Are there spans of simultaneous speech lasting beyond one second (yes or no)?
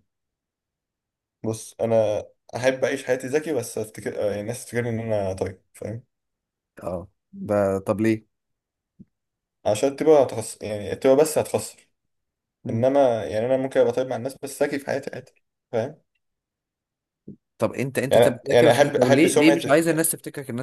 yes